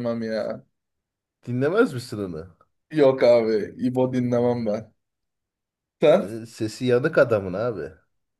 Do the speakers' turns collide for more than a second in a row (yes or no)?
no